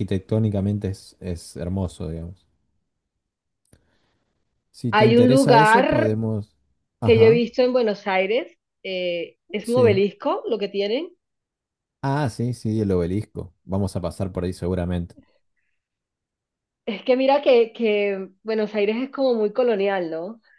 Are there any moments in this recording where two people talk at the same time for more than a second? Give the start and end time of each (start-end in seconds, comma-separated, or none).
4.9-6.1